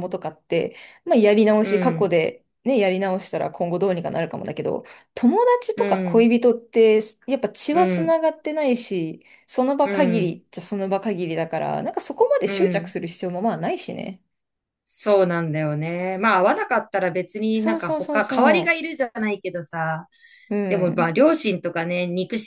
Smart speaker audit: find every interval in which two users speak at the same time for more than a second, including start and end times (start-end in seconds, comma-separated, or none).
17.5-18.8